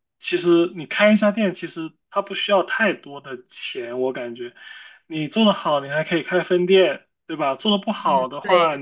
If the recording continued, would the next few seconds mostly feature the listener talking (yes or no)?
no